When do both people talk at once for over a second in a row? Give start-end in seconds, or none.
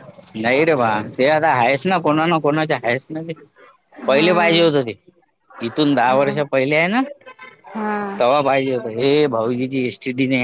none